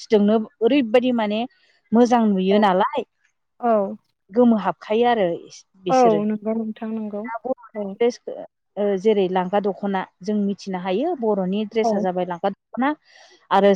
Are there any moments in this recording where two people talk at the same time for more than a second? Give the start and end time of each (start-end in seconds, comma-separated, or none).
none